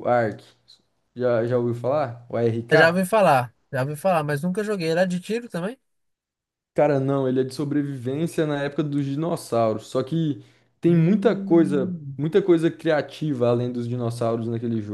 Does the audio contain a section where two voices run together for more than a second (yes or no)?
yes